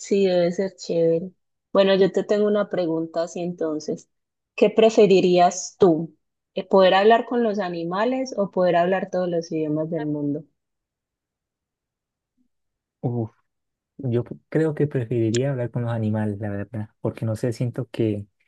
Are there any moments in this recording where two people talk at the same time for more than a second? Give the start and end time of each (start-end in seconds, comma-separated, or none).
none